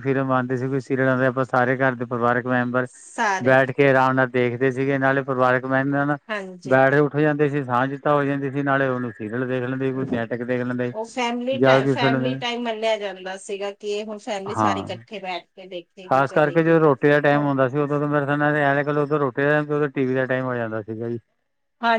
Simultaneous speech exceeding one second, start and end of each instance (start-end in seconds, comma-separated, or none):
none